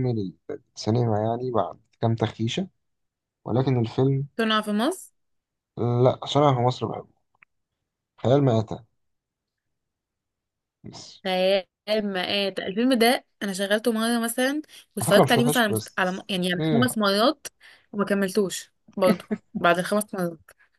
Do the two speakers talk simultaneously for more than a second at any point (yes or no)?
yes